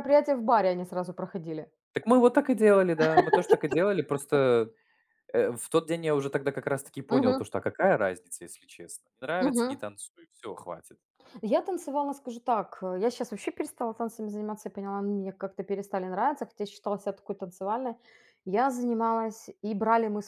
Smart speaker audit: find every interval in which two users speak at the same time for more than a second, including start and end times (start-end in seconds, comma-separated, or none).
none